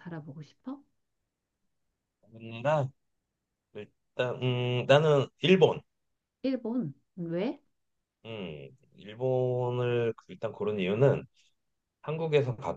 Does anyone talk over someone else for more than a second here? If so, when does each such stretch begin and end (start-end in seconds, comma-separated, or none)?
none